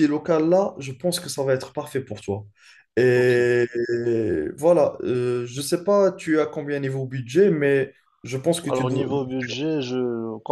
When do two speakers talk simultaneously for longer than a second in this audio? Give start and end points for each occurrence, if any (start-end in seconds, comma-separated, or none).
none